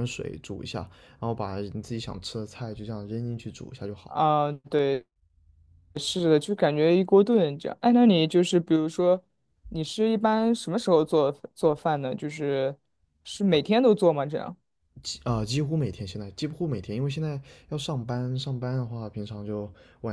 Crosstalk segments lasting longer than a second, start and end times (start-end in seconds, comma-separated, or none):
none